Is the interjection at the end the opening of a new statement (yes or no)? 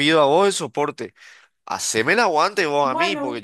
no